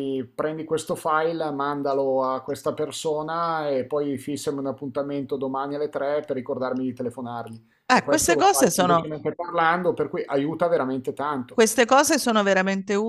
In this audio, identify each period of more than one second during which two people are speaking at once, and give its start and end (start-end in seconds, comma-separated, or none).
7.9-9.1